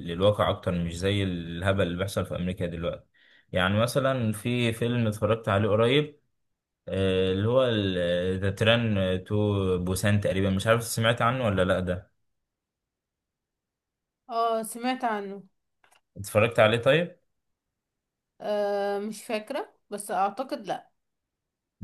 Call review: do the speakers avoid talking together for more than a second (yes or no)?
yes